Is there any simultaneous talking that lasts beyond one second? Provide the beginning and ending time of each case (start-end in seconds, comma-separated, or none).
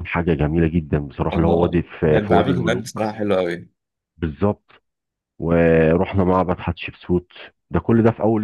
1.3-3.1